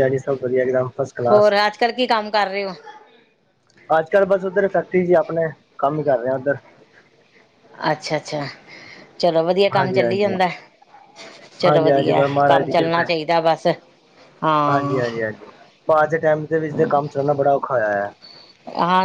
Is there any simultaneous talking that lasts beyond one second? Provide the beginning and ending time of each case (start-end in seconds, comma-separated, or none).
11.7-13.1